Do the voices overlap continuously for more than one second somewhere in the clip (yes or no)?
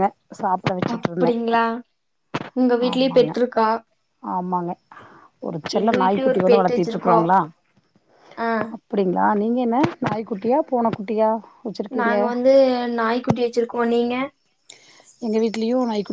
yes